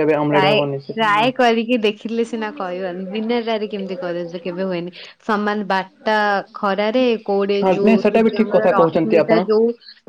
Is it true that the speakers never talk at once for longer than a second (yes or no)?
no